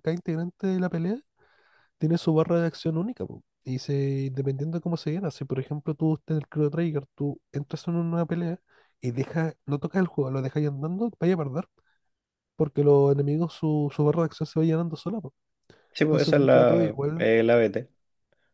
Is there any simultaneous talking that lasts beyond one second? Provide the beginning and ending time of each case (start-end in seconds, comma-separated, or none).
16.0-17.3